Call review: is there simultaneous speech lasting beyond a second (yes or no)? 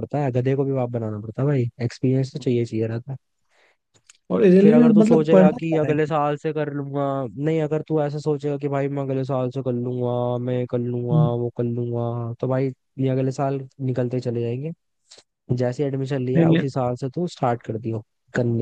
yes